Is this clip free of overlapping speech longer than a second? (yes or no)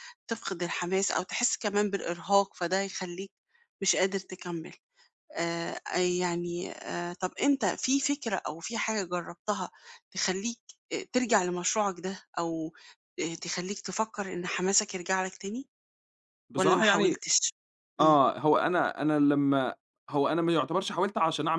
yes